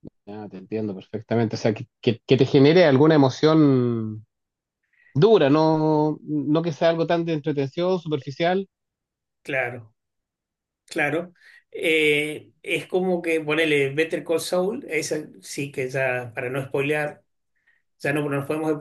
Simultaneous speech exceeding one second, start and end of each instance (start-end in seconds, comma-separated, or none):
none